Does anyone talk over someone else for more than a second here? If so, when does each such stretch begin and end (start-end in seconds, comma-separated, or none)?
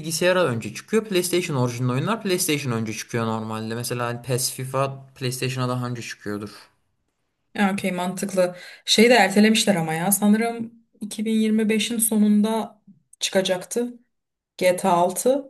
none